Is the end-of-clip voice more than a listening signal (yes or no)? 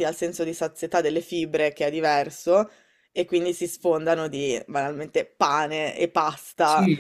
yes